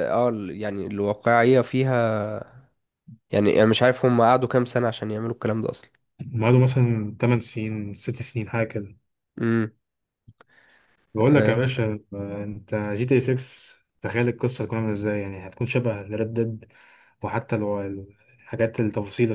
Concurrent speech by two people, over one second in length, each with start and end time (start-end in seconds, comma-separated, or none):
none